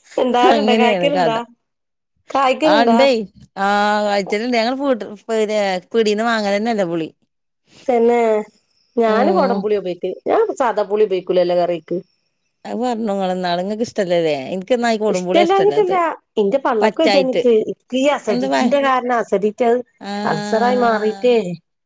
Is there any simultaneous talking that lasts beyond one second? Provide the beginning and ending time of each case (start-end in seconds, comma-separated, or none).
none